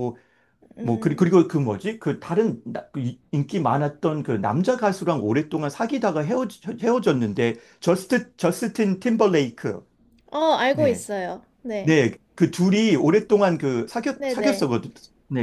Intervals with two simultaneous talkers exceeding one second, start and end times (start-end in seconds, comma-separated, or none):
none